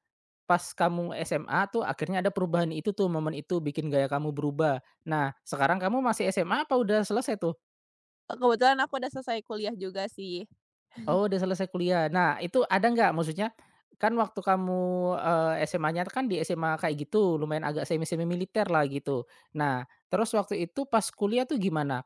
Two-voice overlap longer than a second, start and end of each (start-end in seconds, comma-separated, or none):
none